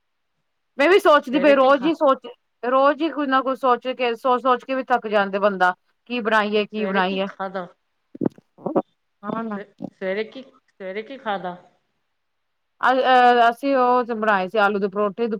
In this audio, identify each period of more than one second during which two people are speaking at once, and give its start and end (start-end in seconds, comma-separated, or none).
none